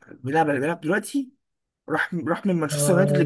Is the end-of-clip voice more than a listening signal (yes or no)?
no